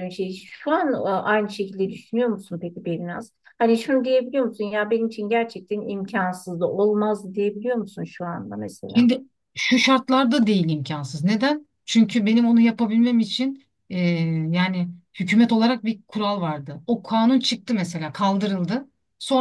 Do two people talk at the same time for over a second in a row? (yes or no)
no